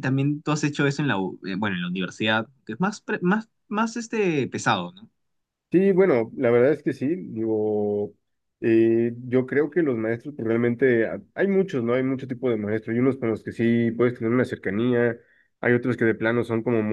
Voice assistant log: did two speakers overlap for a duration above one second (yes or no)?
no